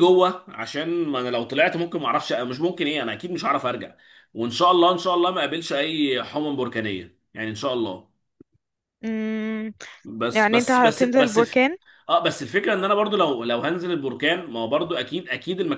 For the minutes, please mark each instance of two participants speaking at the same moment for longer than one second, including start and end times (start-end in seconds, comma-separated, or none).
10.3-11.7